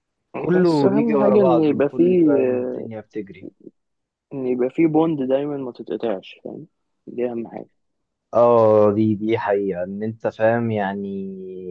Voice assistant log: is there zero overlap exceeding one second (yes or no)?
no